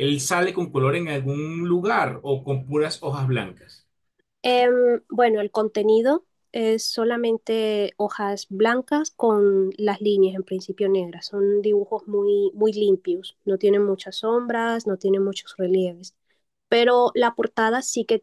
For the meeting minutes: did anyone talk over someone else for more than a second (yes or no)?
no